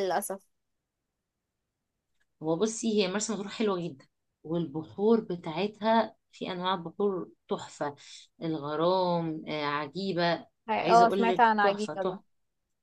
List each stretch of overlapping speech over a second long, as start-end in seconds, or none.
10.7-12.2